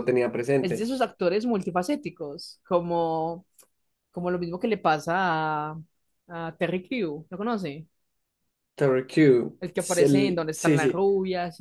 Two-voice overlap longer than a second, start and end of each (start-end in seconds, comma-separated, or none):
9.6-11.1